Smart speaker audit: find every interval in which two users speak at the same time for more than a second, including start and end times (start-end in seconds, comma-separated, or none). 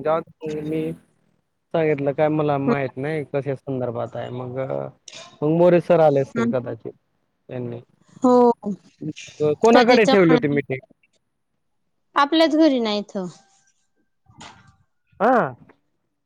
9.4-10.8